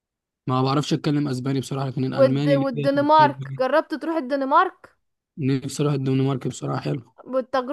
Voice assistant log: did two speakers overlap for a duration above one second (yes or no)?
yes